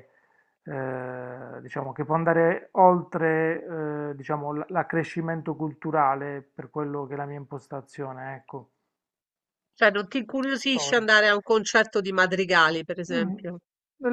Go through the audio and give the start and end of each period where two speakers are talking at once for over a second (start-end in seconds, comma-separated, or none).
none